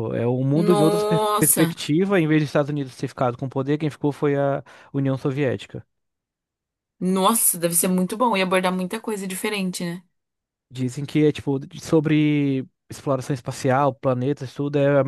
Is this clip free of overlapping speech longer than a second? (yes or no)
no